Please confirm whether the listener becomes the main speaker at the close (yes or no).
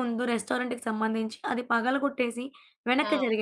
no